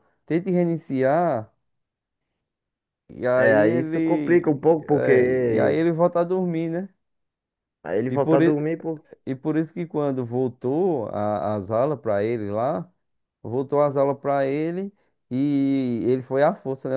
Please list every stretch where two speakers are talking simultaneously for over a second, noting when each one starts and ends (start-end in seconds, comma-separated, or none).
3.3-5.8